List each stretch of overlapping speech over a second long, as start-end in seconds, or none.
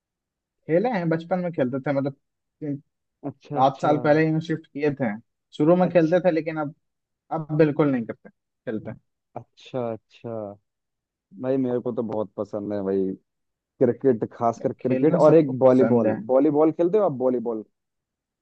14.6-16.2